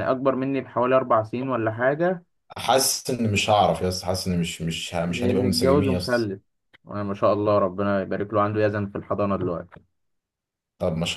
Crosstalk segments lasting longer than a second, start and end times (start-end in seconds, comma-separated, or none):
5.1-6.3